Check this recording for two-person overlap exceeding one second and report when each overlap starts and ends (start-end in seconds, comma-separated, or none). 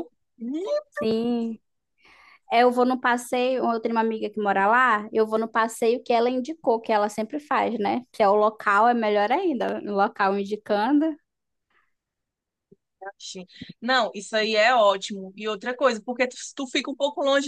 none